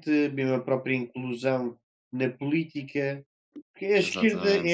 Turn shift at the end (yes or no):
no